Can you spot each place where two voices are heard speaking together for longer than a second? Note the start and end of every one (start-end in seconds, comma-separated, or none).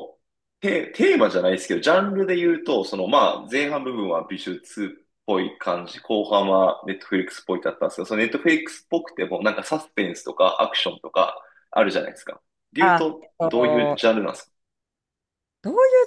12.8-14.1